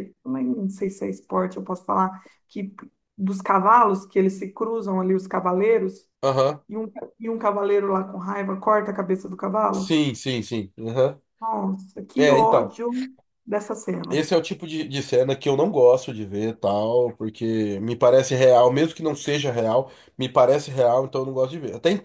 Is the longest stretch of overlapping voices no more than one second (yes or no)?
yes